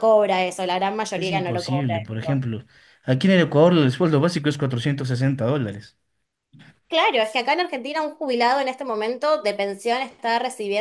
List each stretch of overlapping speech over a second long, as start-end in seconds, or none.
1.1-2.5